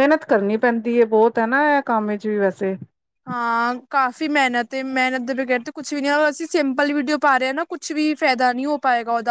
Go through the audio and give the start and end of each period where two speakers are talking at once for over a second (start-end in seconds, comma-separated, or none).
none